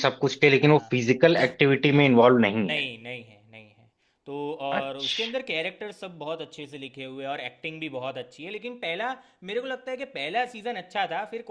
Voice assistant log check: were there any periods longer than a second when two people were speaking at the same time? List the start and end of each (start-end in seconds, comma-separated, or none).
none